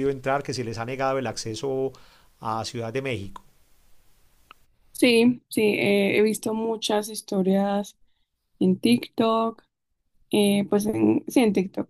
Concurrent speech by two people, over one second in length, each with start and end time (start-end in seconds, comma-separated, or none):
none